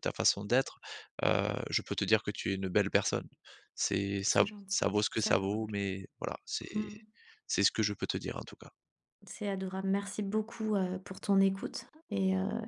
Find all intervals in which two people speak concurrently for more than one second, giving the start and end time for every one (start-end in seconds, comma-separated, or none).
4.3-5.8